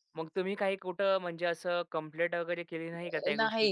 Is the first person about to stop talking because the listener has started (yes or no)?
yes